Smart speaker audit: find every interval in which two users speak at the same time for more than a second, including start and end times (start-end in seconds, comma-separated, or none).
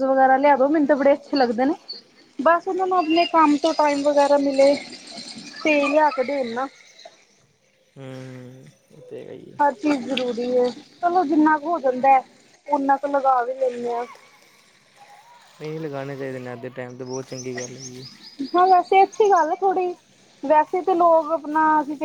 none